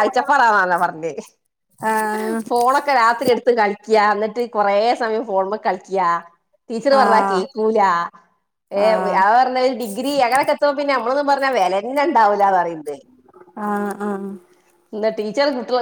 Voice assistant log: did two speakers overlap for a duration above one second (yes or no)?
no